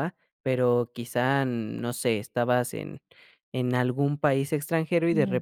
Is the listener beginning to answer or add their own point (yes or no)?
no